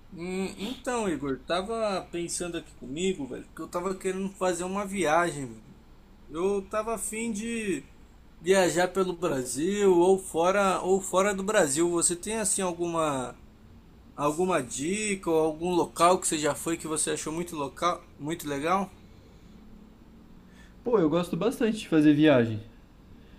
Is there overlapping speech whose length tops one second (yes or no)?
no